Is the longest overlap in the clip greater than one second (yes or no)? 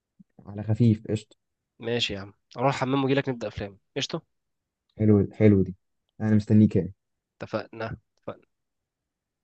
no